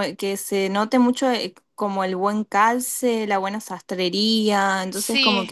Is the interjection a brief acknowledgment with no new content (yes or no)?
yes